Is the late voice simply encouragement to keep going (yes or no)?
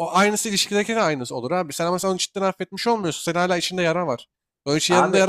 yes